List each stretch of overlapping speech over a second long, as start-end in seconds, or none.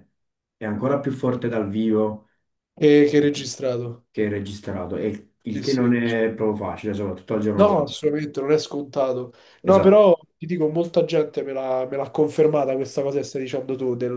none